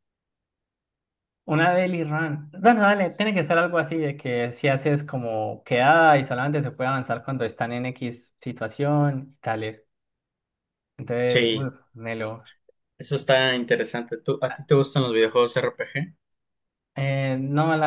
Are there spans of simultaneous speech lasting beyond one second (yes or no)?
no